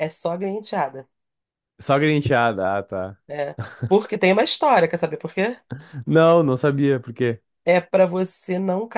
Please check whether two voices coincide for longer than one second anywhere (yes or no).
no